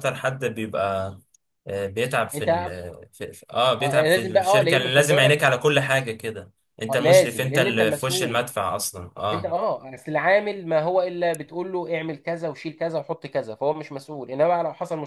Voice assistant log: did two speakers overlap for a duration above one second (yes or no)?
yes